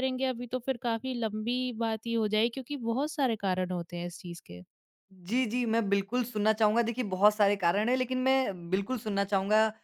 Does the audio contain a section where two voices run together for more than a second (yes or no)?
no